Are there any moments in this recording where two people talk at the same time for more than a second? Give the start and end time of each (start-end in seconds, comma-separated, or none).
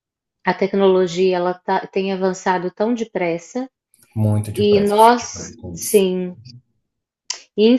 4.6-6.0